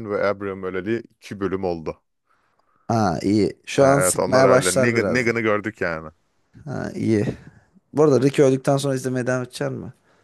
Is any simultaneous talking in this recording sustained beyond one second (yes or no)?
yes